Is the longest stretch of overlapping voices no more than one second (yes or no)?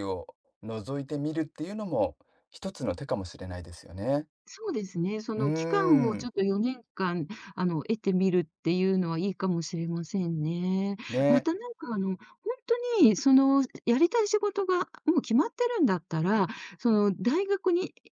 yes